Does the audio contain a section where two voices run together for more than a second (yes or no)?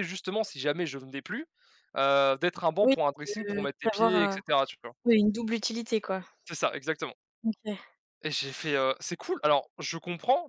yes